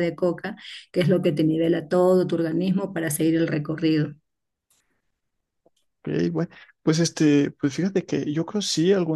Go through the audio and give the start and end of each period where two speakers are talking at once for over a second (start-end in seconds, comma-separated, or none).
none